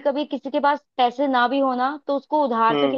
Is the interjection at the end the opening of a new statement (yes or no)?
no